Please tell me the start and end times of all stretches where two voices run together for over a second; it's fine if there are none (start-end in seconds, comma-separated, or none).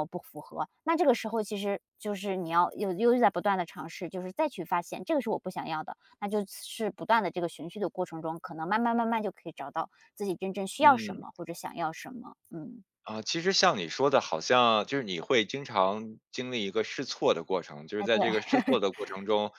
none